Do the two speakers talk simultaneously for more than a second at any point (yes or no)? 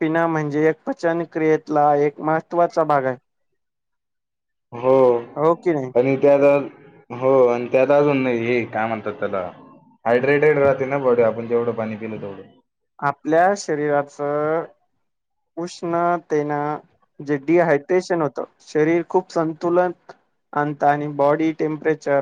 no